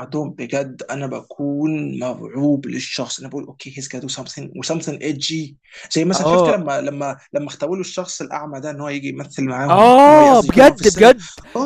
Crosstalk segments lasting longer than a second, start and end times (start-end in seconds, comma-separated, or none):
9.7-11.1